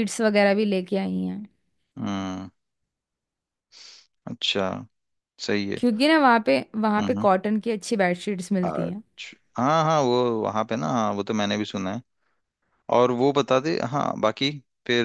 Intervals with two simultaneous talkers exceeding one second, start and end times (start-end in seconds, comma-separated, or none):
none